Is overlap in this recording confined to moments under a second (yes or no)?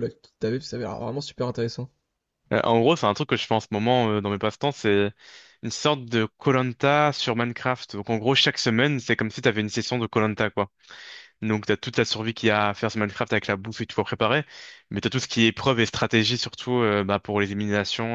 yes